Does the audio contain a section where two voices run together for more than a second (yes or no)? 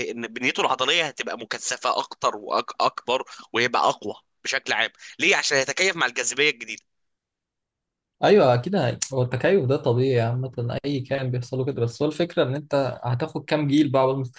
no